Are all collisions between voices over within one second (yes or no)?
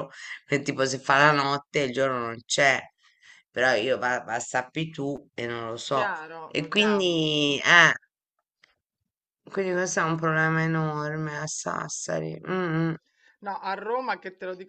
no